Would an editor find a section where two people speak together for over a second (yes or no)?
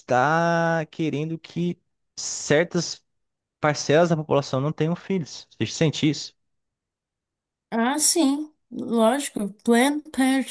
no